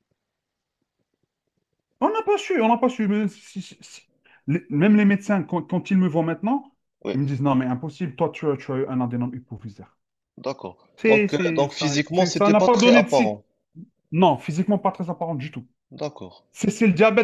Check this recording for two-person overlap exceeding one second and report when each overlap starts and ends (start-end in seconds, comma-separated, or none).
11.0-13.3